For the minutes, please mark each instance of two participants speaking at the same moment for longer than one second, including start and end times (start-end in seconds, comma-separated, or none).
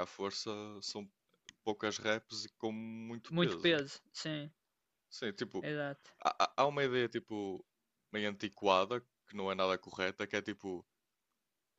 none